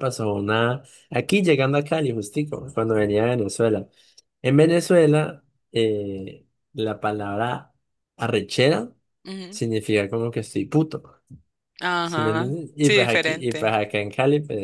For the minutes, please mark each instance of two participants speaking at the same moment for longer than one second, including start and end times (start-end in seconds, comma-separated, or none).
12.0-13.8